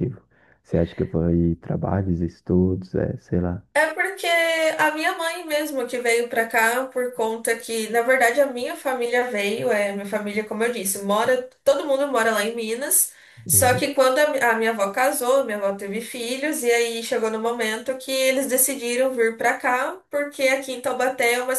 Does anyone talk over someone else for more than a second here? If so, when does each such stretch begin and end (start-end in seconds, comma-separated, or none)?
none